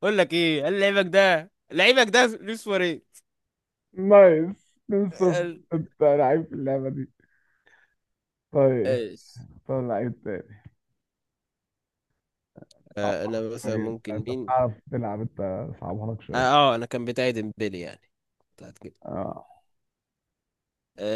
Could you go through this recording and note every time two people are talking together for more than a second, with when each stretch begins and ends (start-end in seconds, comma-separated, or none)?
13.0-14.5